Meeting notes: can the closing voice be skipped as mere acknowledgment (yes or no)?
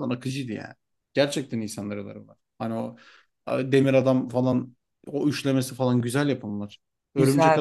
no